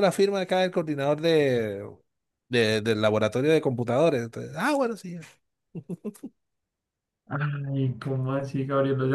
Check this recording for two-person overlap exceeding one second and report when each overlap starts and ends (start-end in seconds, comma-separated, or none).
none